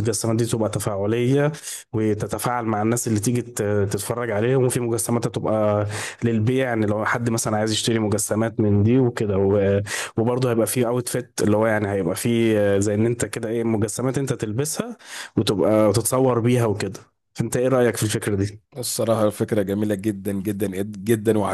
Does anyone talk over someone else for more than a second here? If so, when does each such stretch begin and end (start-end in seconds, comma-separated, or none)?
none